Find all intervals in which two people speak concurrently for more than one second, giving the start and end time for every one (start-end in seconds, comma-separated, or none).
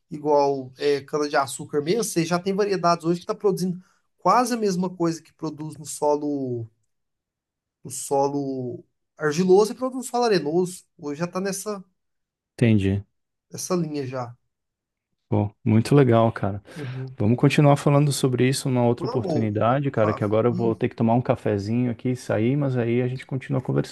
19.0-20.8